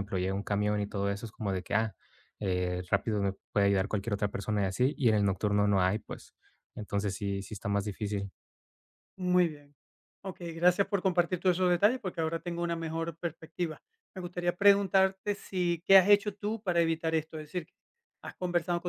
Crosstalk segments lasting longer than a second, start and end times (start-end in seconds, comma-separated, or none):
none